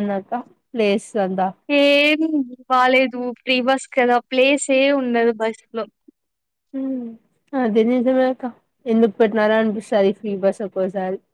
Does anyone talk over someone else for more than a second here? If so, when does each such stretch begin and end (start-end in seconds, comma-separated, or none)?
none